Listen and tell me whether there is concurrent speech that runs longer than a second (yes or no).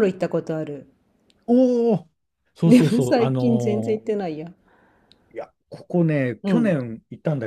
yes